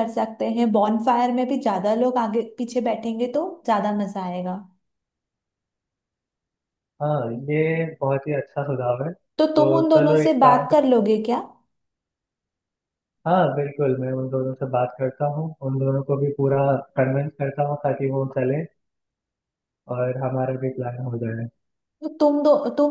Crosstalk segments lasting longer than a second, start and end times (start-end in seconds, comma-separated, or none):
9.4-11.1